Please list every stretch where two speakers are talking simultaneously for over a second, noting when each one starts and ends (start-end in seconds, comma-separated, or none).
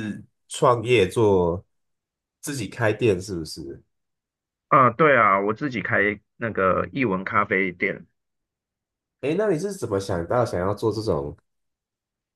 none